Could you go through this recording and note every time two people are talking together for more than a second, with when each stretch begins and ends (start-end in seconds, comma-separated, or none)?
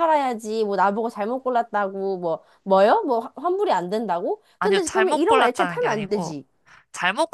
4.6-6.3